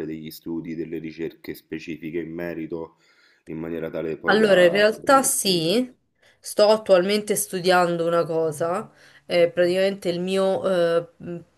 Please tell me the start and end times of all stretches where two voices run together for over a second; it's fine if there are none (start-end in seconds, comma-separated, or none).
4.2-5.8